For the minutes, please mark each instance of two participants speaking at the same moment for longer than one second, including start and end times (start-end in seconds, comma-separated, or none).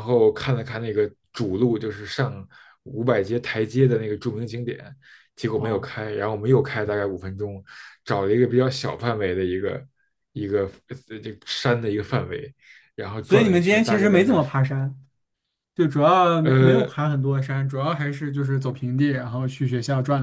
13.2-14.5